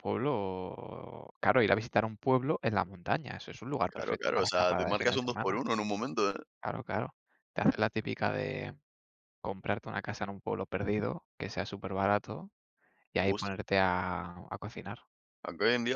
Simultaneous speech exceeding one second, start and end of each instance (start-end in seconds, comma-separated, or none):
3.9-5.6